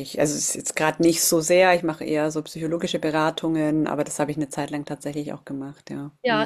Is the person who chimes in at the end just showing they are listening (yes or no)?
no